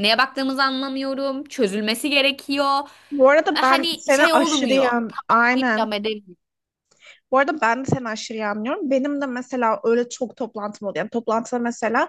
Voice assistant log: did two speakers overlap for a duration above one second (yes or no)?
yes